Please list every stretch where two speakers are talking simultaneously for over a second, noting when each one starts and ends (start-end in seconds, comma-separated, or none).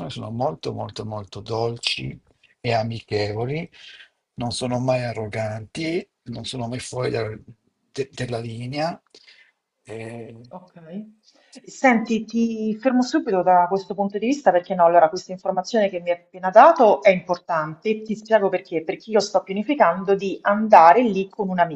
none